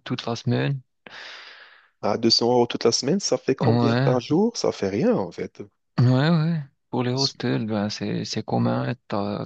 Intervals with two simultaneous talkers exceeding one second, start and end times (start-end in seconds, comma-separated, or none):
none